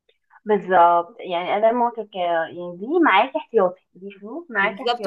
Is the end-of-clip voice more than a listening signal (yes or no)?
yes